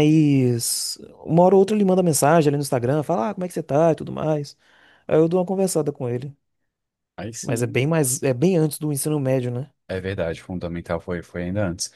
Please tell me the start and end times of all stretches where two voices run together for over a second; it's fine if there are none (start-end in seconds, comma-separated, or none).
none